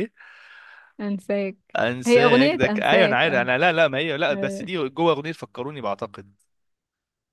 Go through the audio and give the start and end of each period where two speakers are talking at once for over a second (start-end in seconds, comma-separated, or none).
1.8-3.5